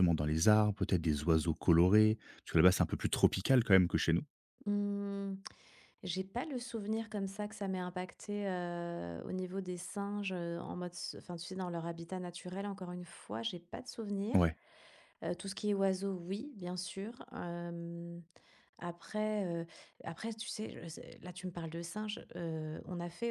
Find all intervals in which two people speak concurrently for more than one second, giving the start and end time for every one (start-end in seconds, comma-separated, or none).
none